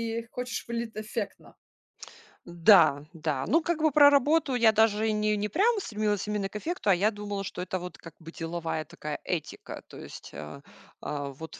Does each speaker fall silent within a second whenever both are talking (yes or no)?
yes